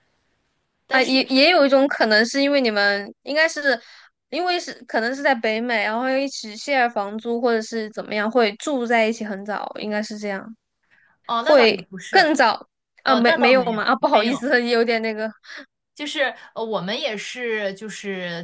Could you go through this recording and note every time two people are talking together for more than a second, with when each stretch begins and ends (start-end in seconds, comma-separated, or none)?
13.0-14.4